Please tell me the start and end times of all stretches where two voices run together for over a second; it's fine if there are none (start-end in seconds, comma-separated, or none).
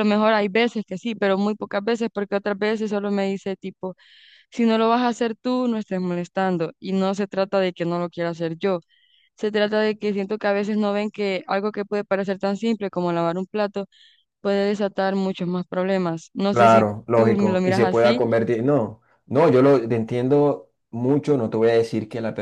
16.5-18.2